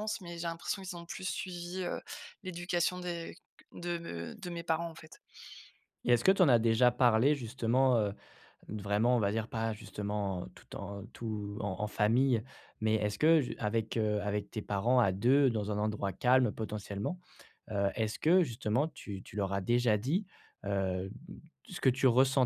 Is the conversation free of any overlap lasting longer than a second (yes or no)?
yes